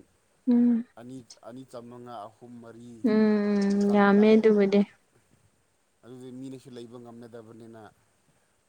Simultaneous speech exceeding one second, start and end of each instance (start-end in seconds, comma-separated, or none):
3.1-4.4